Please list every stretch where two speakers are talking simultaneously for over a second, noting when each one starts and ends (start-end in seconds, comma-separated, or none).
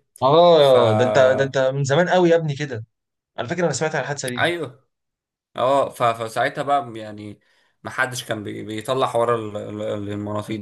none